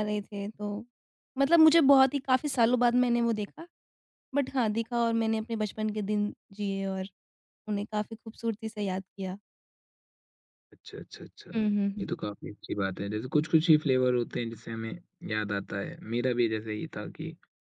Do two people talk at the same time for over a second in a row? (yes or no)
no